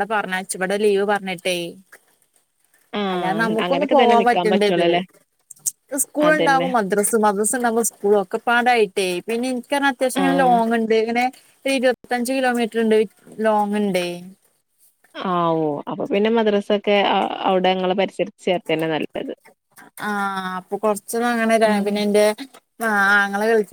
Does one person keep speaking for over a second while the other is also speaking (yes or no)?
yes